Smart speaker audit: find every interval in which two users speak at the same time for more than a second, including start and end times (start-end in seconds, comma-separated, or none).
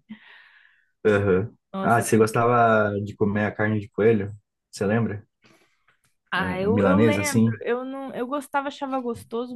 6.3-7.6